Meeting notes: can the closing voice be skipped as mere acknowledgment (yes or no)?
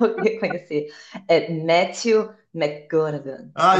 no